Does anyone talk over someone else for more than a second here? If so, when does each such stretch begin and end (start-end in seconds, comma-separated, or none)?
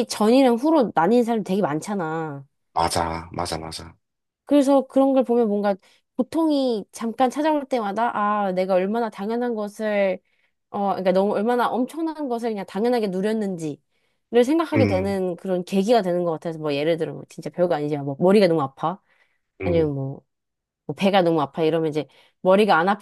none